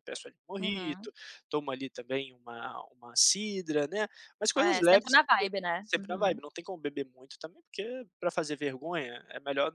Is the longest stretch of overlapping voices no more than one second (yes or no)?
no